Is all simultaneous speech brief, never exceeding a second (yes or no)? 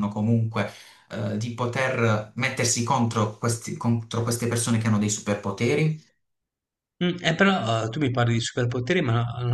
yes